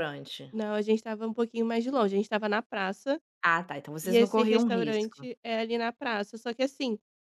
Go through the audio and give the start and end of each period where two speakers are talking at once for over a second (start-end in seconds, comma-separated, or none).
4.0-5.3